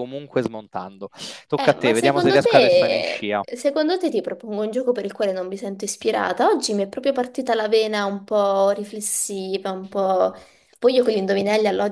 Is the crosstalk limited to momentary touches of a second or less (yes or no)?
no